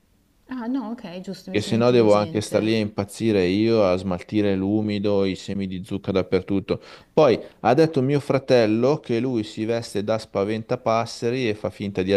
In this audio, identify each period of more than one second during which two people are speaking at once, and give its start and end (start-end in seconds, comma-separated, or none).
1.5-2.7